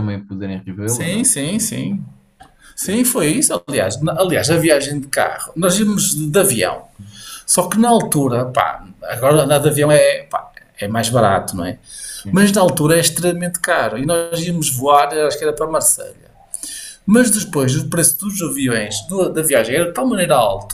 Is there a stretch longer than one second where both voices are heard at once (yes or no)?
no